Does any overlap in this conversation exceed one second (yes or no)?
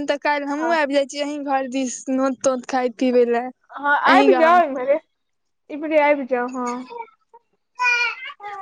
no